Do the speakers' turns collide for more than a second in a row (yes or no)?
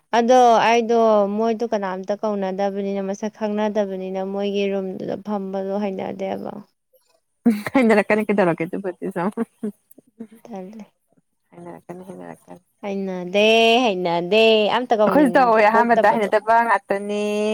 yes